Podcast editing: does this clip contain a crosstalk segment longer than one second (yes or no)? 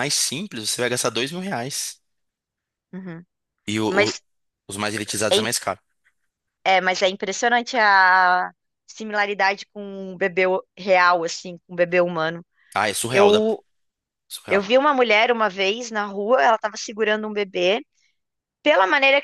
no